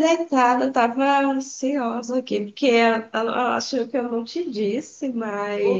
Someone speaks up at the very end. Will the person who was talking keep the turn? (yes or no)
no